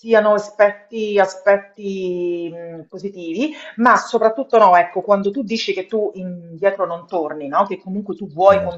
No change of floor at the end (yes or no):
yes